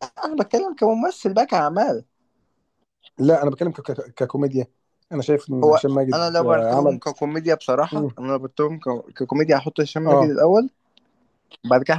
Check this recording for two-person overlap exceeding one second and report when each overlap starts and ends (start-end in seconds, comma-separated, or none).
5.6-7.0